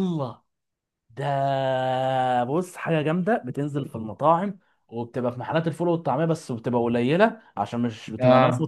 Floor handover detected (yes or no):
no